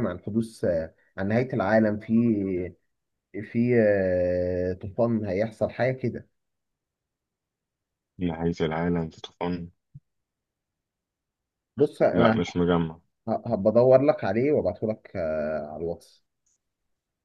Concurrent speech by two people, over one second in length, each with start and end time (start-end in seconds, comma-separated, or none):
none